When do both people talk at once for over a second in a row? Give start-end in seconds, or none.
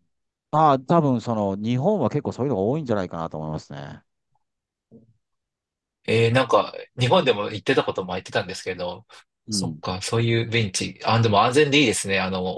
none